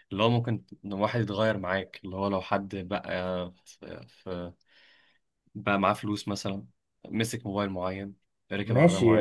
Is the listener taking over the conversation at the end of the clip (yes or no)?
yes